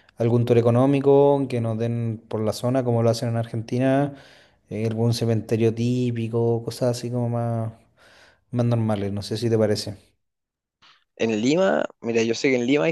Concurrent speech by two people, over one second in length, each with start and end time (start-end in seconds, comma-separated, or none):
none